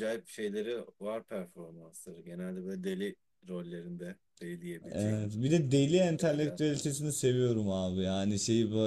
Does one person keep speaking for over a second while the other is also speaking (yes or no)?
no